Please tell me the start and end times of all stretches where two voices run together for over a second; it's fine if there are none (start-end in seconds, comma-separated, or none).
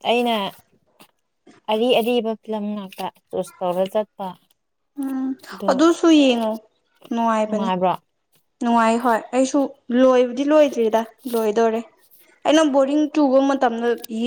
none